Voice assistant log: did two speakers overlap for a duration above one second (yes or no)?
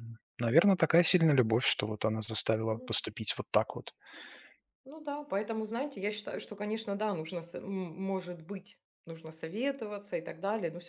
no